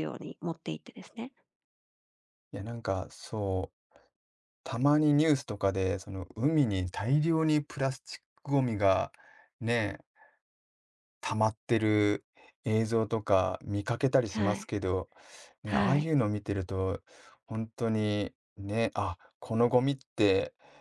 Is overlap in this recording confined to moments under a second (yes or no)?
yes